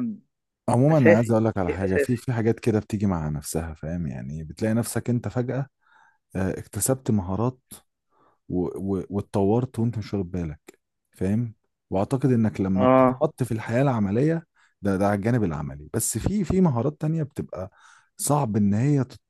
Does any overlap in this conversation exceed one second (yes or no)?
yes